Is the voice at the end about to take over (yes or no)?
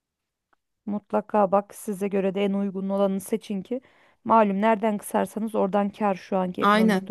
yes